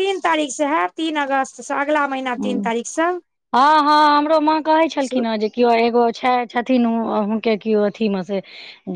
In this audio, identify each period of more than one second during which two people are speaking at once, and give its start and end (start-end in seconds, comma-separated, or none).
none